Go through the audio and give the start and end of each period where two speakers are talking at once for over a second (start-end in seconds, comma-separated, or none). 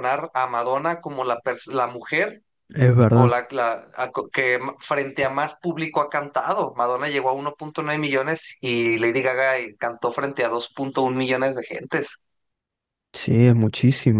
none